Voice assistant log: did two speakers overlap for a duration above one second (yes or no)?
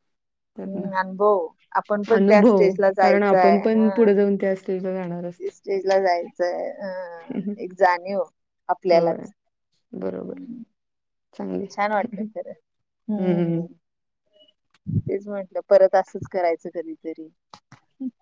yes